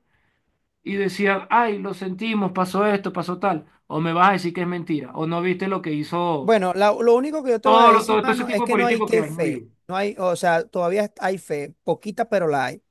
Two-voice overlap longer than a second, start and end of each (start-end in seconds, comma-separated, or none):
7.6-9.6